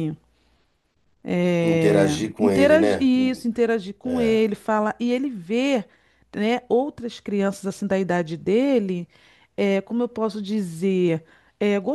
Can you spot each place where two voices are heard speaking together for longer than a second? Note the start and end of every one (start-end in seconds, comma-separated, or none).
1.6-3.1